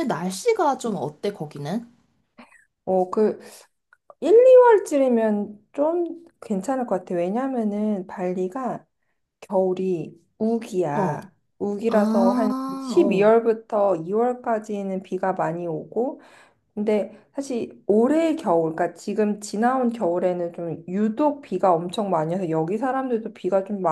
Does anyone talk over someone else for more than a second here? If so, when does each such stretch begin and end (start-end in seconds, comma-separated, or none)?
11.9-13.3